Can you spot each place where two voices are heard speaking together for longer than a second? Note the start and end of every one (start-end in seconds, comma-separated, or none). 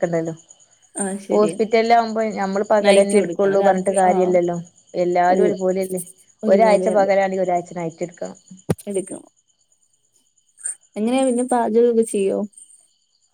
2.9-4.3